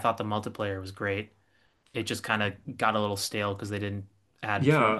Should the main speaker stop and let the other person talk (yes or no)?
yes